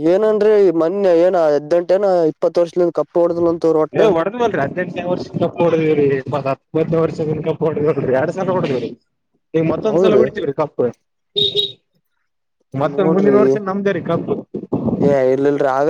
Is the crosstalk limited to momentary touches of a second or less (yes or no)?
yes